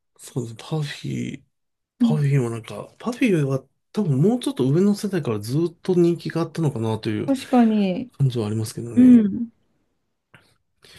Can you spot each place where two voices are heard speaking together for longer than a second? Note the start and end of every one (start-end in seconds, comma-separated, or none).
none